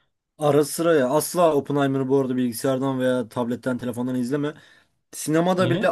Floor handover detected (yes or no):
no